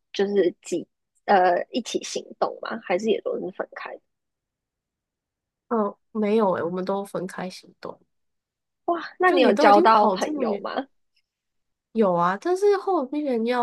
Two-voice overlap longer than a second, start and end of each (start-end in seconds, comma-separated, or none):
9.2-10.7